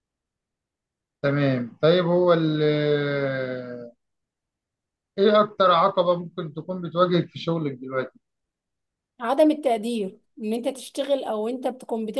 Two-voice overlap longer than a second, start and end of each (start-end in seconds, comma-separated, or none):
none